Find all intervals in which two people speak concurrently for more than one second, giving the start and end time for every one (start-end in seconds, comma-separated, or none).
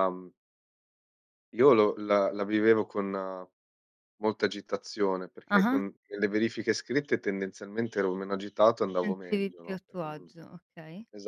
9.0-10.3